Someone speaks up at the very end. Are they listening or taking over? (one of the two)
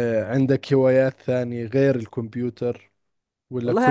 taking over